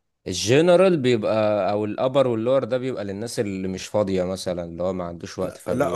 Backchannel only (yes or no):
no